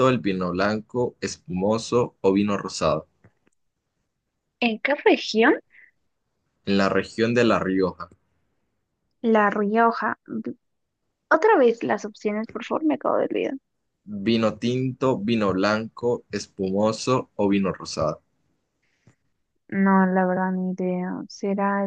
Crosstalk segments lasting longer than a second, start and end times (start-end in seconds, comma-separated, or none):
none